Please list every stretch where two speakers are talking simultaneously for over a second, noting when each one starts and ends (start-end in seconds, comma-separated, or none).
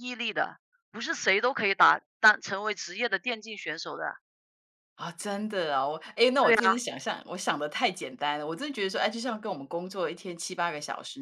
none